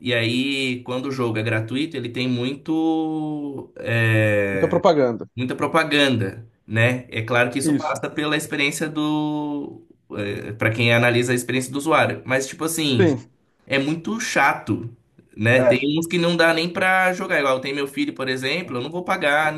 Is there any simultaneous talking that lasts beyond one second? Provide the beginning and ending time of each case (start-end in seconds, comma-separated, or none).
none